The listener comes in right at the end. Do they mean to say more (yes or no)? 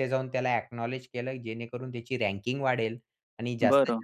no